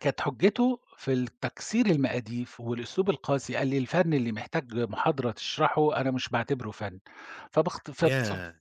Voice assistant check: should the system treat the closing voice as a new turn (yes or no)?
no